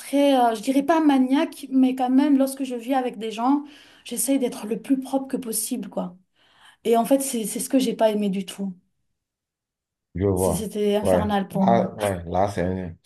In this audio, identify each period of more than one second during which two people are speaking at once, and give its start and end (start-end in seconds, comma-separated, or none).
10.3-11.9